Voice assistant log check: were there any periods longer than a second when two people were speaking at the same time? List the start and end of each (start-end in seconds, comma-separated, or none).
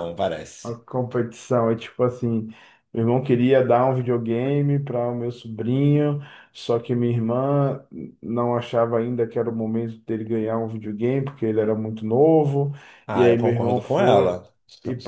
13.1-14.3